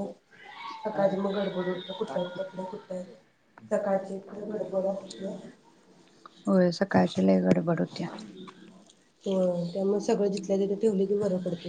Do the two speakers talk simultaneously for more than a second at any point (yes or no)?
no